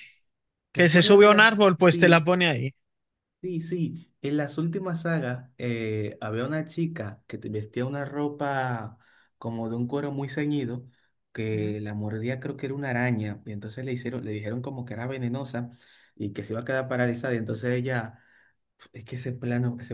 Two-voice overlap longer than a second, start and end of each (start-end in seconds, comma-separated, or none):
0.7-2.3